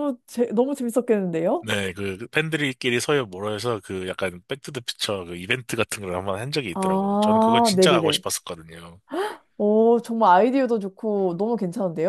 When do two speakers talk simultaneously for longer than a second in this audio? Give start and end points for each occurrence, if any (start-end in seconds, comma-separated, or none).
6.7-8.2